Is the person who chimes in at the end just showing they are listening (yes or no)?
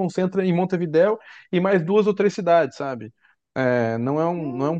yes